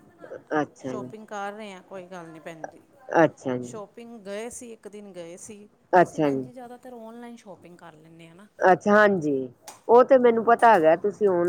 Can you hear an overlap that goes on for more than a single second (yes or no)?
no